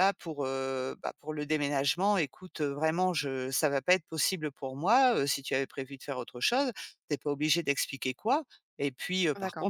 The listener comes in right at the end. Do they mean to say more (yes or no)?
no